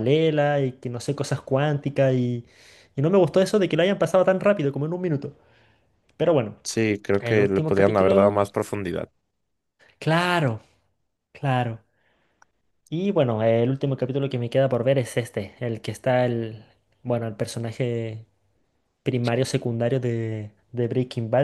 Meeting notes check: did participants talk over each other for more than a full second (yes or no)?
yes